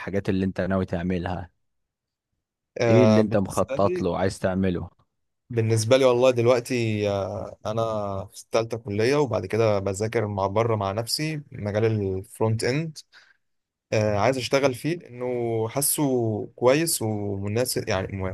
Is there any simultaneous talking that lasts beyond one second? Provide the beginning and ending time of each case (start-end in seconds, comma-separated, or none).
2.9-4.1